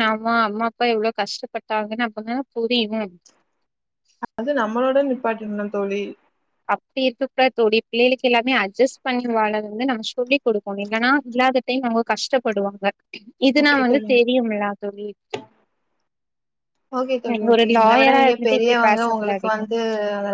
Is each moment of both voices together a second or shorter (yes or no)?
no